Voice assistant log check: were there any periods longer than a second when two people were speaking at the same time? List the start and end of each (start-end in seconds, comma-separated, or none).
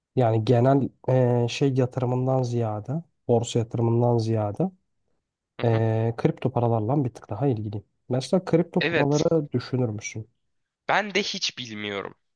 none